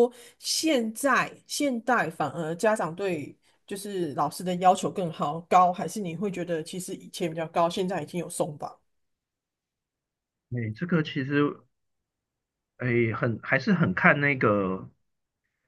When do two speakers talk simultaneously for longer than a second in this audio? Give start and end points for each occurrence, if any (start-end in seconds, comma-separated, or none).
none